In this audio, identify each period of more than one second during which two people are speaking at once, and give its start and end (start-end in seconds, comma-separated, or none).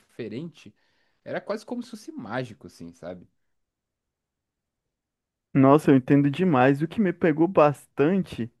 none